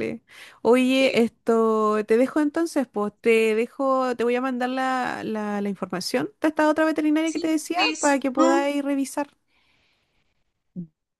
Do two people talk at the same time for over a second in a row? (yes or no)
yes